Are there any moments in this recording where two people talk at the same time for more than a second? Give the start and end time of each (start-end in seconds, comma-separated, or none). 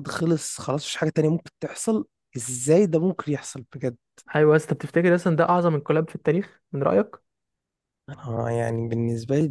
none